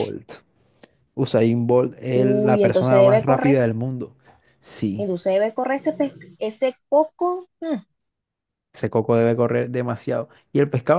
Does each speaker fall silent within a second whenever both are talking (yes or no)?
no